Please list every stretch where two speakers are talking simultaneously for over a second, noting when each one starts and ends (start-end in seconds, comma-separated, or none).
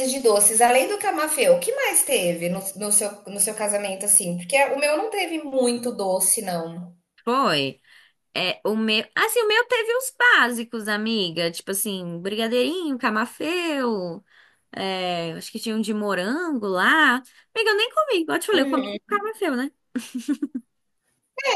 none